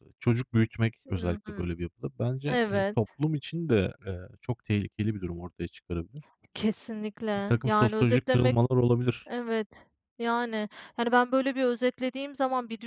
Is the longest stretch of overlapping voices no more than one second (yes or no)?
no